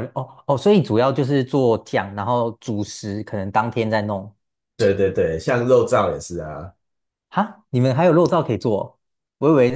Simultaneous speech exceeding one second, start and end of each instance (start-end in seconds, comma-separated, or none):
none